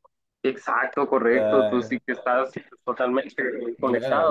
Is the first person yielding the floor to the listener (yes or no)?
yes